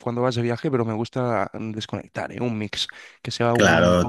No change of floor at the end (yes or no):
no